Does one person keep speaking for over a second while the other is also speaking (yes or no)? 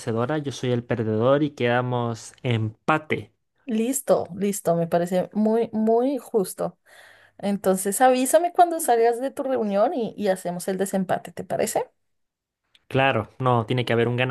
no